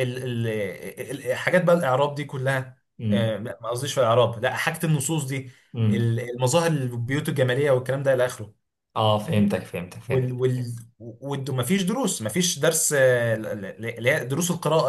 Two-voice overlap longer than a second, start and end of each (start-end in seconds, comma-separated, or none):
none